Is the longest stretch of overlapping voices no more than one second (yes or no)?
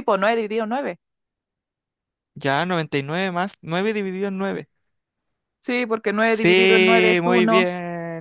no